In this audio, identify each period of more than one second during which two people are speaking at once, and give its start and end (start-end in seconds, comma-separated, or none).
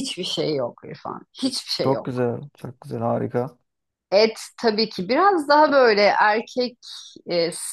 none